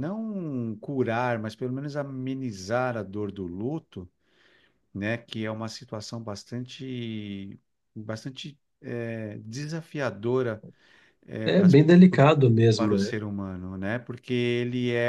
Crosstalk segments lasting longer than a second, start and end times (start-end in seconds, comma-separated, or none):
none